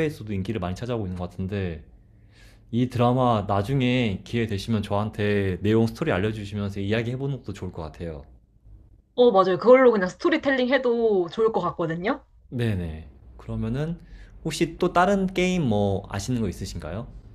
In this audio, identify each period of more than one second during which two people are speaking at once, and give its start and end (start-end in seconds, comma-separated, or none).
none